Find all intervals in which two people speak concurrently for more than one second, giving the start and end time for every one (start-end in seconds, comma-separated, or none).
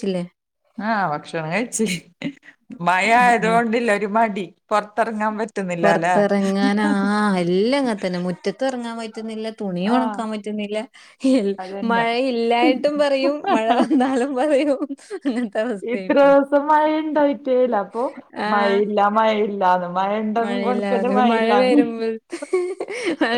20.4-21.9